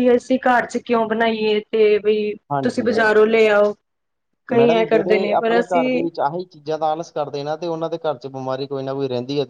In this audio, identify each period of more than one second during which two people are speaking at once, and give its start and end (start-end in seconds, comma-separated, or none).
4.6-6.0